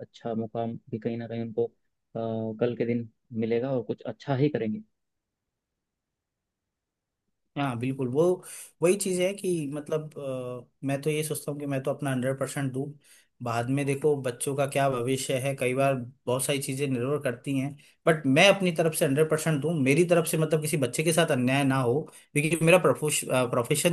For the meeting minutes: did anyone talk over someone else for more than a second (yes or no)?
no